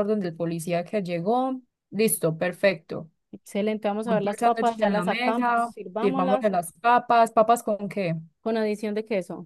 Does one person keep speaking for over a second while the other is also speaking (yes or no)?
yes